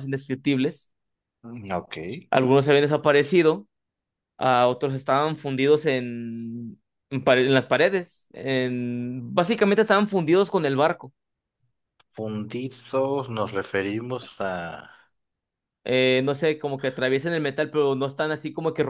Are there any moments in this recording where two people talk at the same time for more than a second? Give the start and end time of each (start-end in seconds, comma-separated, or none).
none